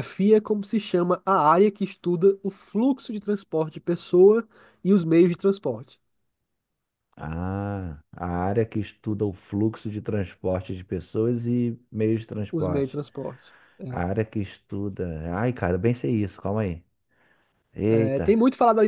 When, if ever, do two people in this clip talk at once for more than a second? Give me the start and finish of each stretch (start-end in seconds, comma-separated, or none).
none